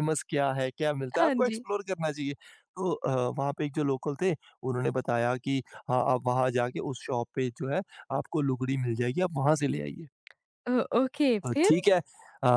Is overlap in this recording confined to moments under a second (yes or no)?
yes